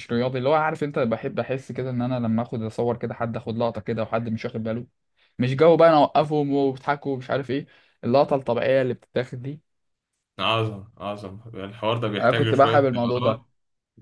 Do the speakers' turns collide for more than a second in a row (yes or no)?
yes